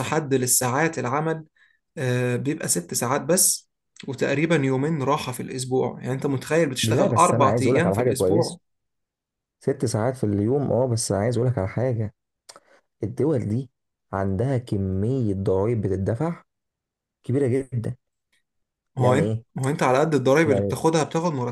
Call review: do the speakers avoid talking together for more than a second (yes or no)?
no